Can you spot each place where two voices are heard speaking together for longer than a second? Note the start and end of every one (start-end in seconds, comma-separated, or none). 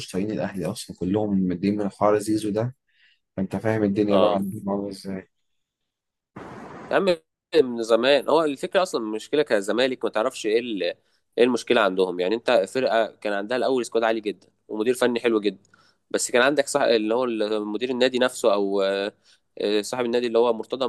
none